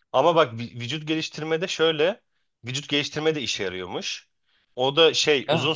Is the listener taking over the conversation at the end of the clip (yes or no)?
no